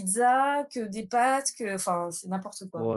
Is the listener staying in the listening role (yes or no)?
no